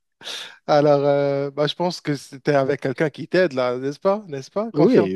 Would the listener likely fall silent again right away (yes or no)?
no